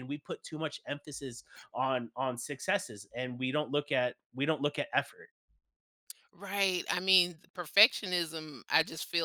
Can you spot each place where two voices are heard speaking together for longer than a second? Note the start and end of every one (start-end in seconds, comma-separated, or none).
none